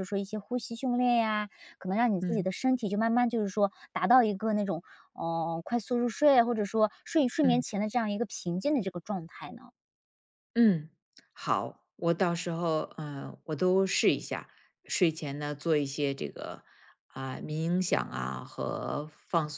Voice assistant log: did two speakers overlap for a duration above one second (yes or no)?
no